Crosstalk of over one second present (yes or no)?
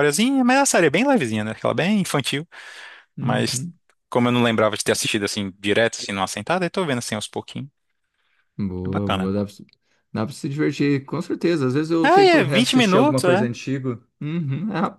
yes